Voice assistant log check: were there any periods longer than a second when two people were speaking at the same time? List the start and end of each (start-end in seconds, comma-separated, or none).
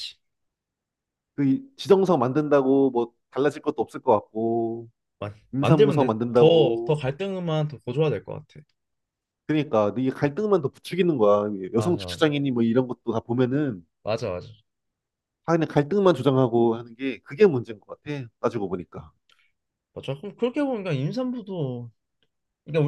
5.5-7.0